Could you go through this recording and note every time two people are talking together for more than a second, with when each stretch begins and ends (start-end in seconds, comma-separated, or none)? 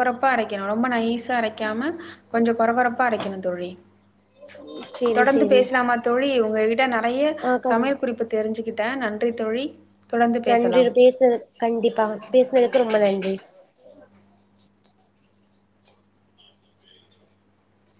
none